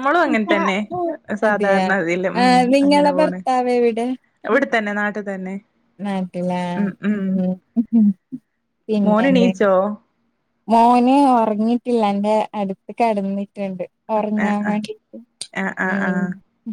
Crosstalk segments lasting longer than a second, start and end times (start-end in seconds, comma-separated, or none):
none